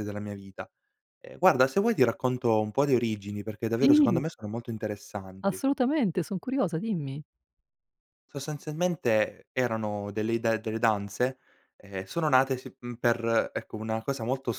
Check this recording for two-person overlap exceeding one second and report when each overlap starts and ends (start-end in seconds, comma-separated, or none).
none